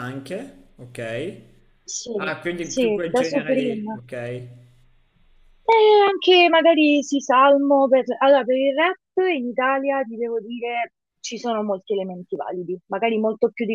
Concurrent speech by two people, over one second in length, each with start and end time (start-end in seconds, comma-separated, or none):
2.6-4.0